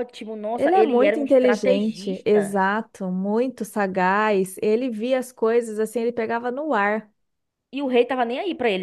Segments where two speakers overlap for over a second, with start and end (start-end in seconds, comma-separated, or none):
0.5-2.6